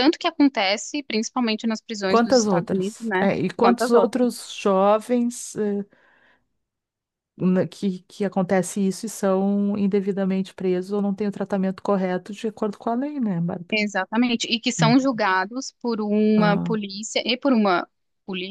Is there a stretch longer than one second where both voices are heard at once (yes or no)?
yes